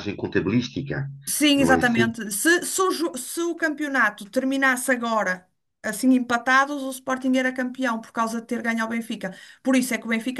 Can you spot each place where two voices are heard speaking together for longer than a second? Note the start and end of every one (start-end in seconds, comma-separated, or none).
none